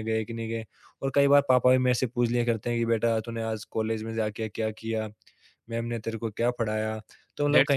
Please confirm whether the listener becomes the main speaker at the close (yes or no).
yes